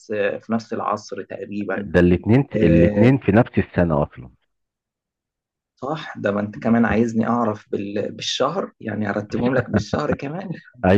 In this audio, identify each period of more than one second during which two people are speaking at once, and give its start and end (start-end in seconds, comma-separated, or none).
none